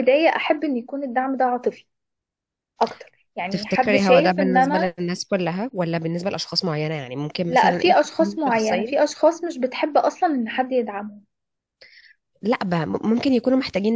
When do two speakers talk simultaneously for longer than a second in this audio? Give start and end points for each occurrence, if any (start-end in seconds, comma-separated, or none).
3.5-5.0, 7.5-9.1